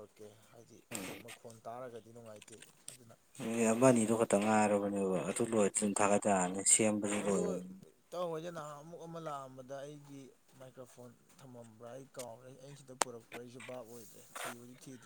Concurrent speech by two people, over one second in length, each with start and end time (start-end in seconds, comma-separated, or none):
none